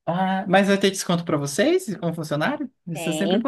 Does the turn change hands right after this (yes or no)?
yes